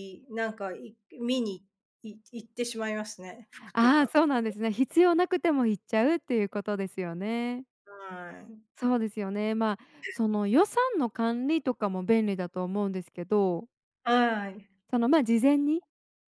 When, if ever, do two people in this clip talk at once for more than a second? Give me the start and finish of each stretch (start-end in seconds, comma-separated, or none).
none